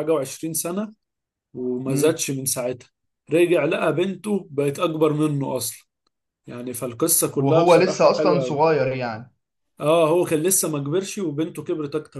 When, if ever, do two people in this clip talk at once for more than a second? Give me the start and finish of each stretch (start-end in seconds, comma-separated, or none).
7.3-8.6